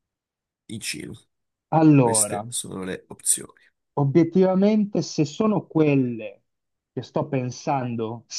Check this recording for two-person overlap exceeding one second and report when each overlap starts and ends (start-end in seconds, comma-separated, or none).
none